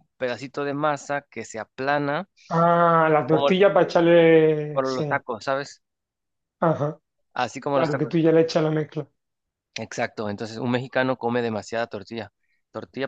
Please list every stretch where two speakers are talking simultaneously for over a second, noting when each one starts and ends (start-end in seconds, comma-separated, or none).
none